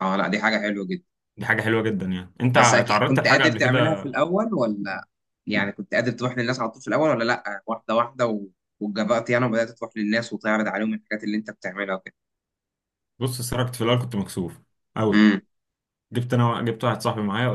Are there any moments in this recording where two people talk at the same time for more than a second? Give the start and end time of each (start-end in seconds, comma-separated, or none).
2.5-4.1